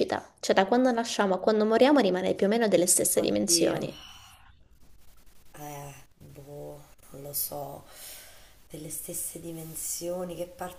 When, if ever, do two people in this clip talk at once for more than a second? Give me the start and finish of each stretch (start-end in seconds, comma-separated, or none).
none